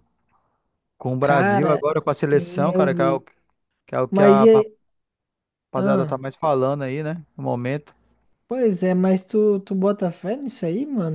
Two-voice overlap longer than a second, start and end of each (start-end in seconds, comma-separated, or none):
1.2-3.2